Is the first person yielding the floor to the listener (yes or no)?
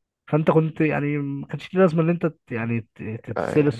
no